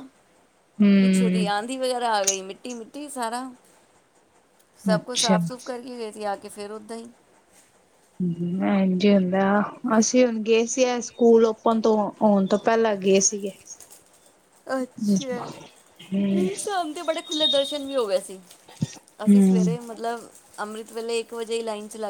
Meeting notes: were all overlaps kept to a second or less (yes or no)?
yes